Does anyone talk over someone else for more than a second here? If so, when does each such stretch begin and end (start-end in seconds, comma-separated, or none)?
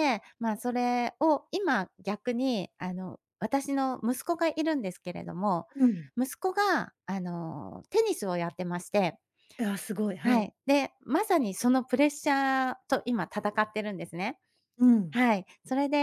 none